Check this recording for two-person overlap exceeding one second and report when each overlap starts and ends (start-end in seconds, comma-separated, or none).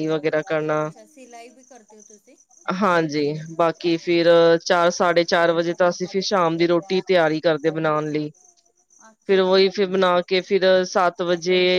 none